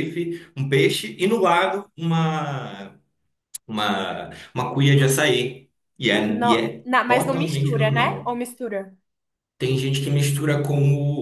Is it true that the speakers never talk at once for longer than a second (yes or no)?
no